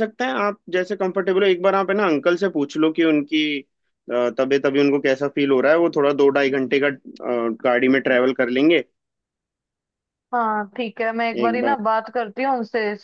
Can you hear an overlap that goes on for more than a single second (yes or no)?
no